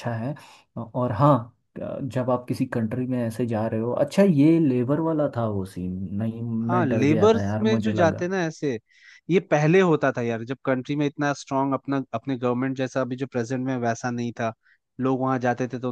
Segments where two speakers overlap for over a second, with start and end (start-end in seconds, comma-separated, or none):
6.6-8.3